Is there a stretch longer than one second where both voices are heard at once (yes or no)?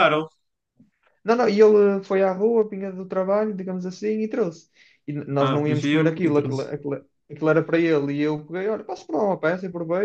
yes